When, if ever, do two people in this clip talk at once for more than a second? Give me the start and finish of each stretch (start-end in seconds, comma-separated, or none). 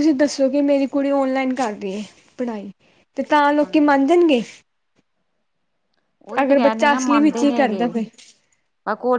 6.6-7.9